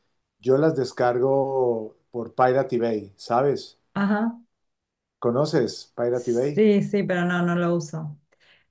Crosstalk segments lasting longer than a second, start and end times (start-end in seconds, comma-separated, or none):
none